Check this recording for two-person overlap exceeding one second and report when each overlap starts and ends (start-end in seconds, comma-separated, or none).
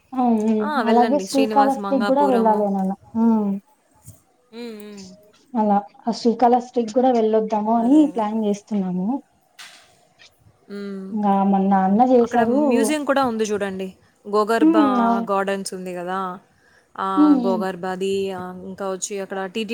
0.9-2.6